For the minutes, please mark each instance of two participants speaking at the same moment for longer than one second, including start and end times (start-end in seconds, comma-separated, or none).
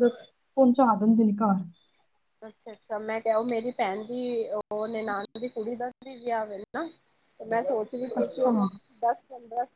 none